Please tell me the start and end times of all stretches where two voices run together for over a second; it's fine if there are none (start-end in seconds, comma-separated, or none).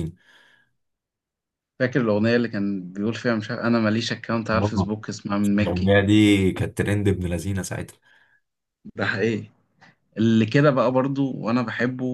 none